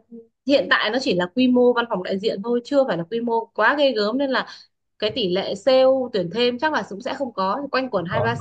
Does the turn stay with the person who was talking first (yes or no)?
yes